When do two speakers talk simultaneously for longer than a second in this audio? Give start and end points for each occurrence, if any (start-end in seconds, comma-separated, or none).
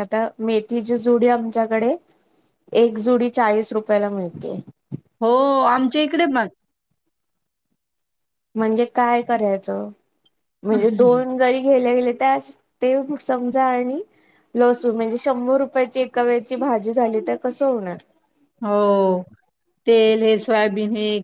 none